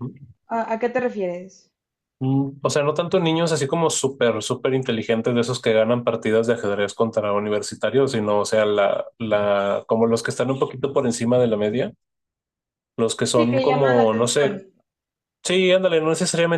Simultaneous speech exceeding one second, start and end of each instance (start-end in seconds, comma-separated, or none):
13.4-14.6